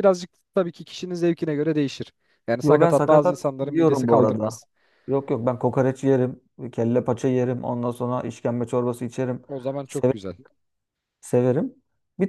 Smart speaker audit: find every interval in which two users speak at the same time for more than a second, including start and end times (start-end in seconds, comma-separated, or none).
2.6-4.6